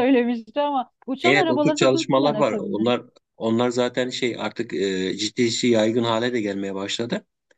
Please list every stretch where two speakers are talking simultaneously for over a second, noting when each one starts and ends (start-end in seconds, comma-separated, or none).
1.2-2.8